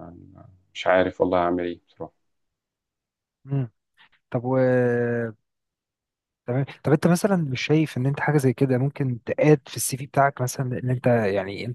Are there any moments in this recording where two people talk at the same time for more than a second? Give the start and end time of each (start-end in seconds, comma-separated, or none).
none